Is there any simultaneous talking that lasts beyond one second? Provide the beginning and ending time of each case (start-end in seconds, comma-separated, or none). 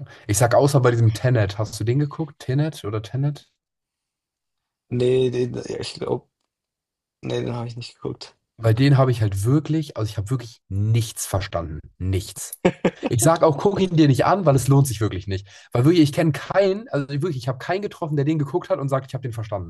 none